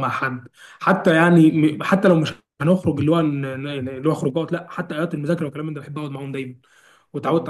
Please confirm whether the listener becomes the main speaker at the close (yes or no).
yes